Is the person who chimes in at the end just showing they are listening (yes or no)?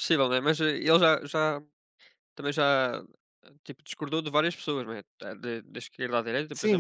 no